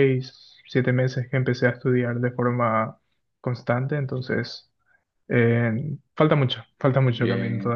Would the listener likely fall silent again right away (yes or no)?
no